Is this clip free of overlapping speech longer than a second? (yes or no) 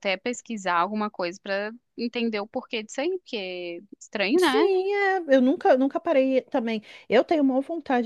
yes